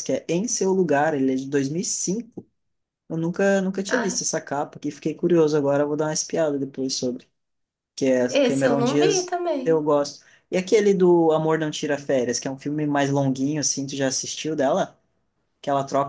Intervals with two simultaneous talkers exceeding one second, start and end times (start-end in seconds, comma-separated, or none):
8.3-9.9